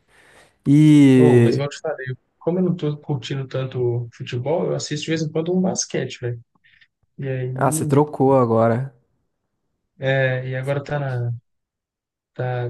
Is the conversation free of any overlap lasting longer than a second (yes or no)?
yes